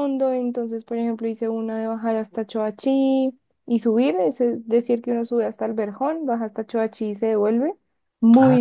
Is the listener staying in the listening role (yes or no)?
no